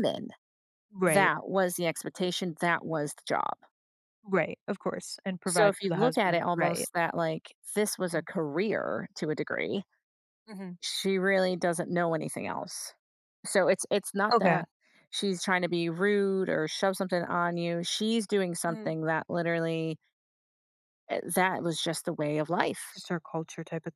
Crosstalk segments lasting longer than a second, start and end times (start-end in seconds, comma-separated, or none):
5.5-6.9